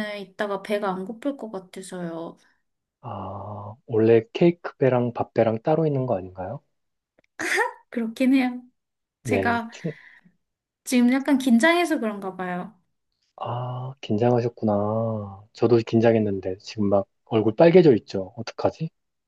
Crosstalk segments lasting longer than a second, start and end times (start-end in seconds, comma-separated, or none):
none